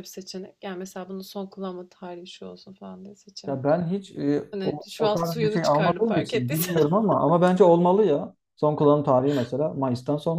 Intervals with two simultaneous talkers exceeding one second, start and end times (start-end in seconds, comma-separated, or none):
4.5-6.8